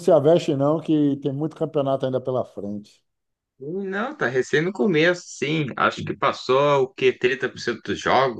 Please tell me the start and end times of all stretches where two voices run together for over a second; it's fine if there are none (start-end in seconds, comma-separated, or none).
none